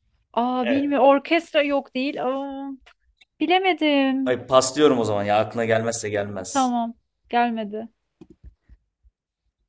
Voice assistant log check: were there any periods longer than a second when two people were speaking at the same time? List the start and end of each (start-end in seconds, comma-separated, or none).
none